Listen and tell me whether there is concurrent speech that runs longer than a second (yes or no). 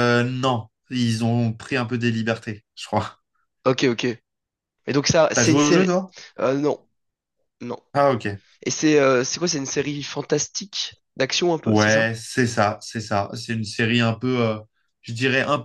no